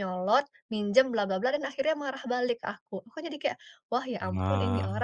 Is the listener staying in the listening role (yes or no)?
yes